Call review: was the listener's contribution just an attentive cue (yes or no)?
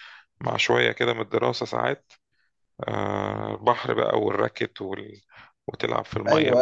no